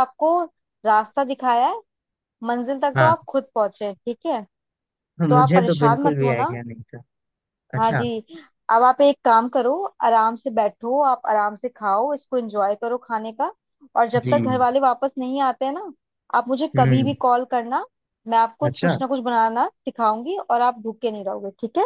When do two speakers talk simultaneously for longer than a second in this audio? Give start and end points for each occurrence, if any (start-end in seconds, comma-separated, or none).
5.3-6.5